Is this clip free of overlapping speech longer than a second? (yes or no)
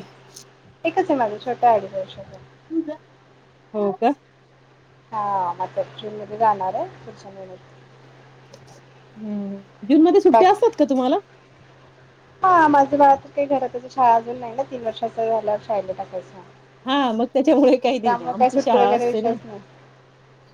no